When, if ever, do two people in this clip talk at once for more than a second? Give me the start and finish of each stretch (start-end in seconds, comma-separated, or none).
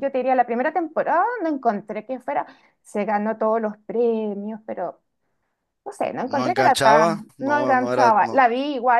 6.3-8.5